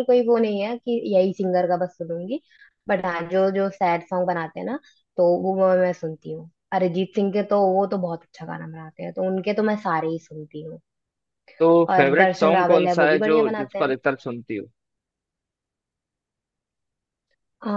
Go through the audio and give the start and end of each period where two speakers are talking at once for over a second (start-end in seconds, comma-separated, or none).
11.9-13.9